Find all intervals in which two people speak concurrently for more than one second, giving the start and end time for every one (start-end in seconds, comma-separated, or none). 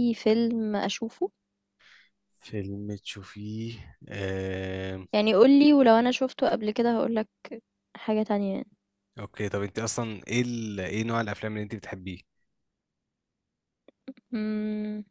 none